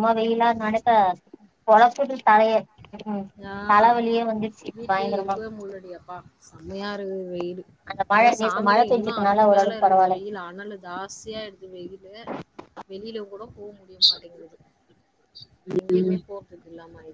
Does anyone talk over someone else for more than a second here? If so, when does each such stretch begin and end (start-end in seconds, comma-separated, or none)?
8.2-10.2